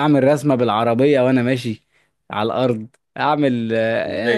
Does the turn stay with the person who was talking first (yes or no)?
no